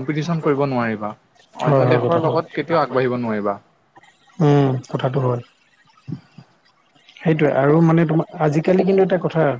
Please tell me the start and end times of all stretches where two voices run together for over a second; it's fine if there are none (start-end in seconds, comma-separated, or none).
1.9-3.3